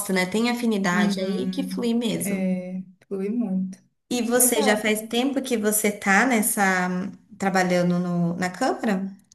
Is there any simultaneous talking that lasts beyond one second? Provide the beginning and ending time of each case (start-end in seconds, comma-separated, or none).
0.9-2.5